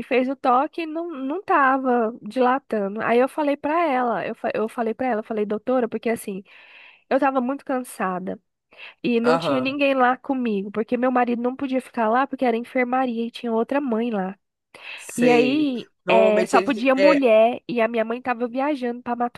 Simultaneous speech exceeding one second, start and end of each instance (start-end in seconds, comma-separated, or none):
15.2-17.3